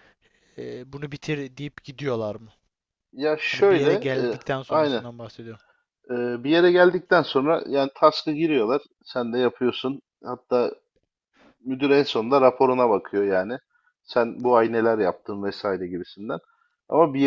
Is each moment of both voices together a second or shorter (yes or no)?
no